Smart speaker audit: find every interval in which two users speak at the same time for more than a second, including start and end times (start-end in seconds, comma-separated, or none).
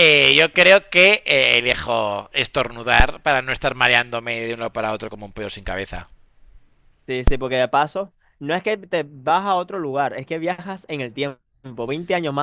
none